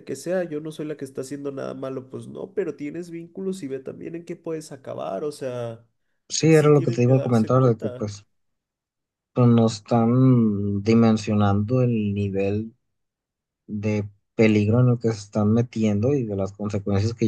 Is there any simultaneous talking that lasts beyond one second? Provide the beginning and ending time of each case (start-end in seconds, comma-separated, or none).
6.5-8.1